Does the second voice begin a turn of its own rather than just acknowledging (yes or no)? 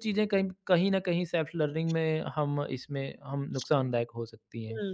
yes